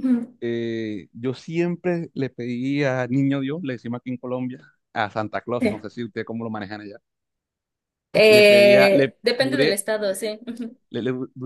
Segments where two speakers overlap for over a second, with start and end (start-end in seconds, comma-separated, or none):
8.3-9.8